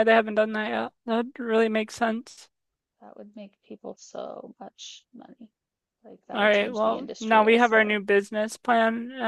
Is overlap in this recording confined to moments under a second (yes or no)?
no